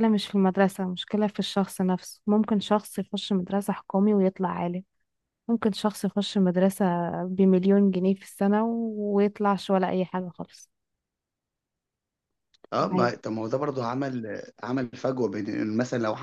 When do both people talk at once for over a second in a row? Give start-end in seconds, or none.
none